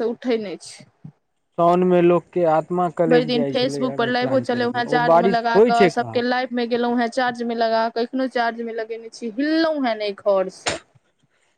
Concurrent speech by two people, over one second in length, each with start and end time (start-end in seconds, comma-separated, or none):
3.1-6.2